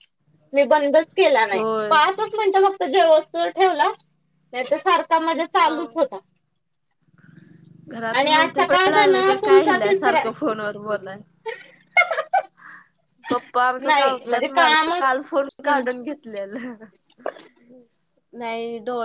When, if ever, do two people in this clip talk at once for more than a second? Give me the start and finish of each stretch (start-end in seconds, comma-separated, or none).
13.9-15.8